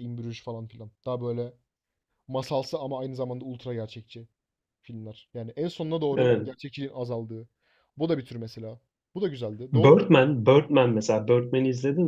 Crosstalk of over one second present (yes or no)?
no